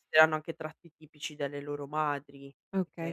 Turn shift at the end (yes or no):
yes